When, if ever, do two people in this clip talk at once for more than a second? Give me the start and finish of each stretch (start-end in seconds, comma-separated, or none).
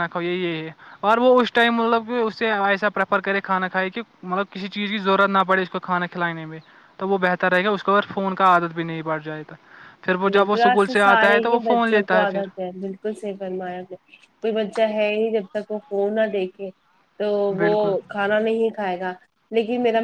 10.3-12.4